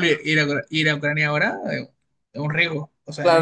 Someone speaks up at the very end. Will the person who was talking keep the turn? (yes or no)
no